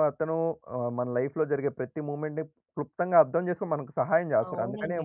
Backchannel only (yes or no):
no